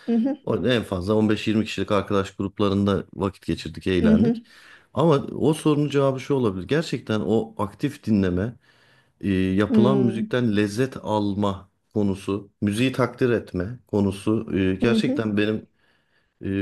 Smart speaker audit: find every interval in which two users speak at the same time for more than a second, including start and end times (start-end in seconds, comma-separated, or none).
none